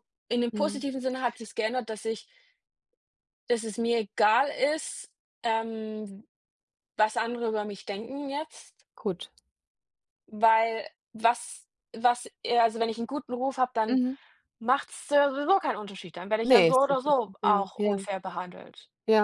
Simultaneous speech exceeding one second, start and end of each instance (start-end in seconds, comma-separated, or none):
16.4-18.0